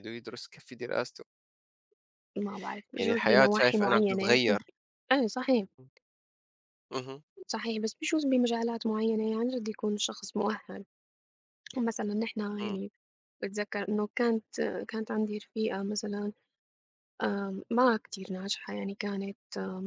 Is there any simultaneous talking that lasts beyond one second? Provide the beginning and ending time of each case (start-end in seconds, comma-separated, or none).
3.0-4.4